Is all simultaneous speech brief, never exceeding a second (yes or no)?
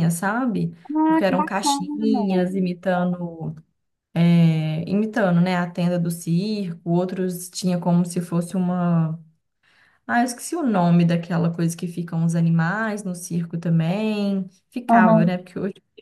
no